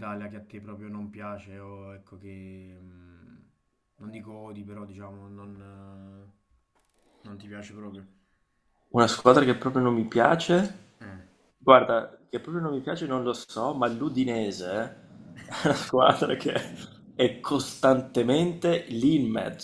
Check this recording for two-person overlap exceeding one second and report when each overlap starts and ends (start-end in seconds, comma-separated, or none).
none